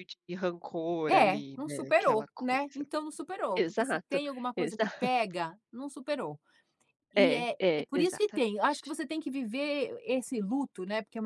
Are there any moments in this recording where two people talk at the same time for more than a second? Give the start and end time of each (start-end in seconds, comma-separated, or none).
1.1-2.8, 3.6-5.1, 7.2-9.0